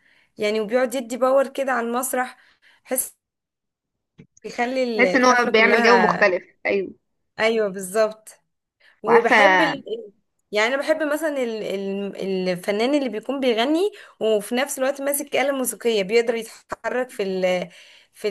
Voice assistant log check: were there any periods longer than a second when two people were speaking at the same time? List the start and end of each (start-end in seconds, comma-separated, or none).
5.0-6.3